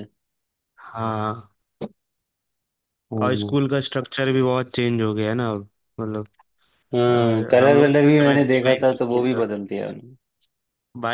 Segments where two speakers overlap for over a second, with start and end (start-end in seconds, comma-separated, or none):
7.1-9.4